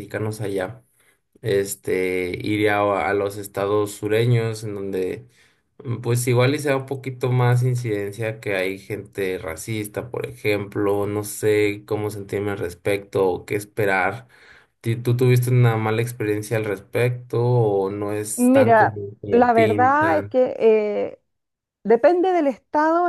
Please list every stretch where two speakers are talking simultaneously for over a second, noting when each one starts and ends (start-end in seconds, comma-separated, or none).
18.4-20.4